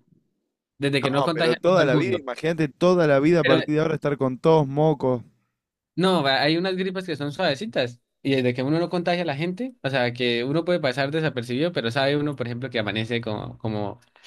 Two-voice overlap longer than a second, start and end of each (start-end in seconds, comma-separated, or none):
1.0-2.2